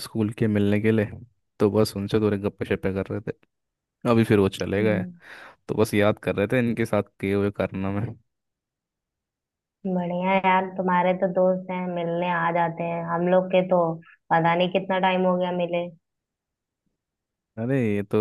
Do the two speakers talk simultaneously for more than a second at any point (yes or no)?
no